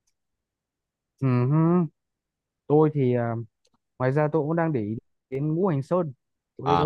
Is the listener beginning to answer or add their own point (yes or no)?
yes